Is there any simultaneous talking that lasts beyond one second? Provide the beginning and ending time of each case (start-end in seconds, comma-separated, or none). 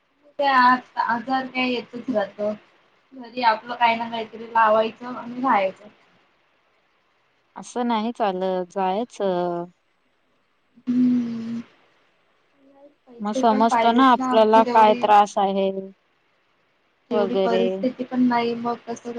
13.2-15.0